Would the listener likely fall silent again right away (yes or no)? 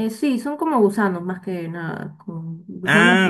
no